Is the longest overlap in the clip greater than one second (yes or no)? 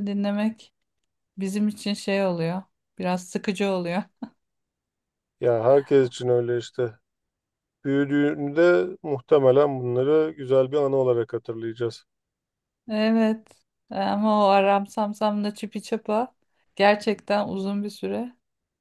no